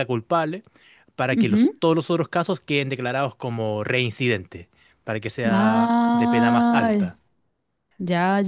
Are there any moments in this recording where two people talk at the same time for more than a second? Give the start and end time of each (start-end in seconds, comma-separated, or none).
5.5-6.9